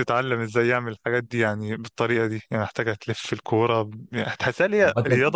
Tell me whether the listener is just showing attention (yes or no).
yes